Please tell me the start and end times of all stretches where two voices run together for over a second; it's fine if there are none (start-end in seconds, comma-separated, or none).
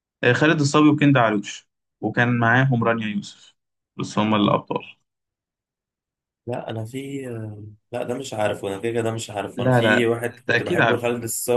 9.6-11.0